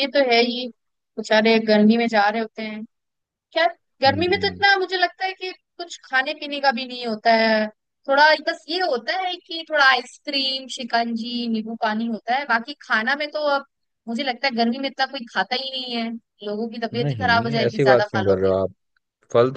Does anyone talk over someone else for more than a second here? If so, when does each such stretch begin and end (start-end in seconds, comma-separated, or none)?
16.9-18.5